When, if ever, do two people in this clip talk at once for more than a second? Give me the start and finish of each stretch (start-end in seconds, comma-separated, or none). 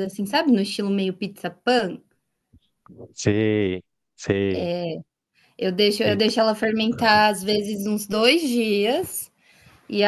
none